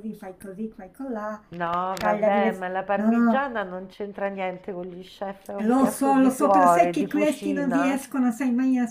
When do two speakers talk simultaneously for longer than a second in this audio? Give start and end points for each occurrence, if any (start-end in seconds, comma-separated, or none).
2.0-3.5, 5.6-8.0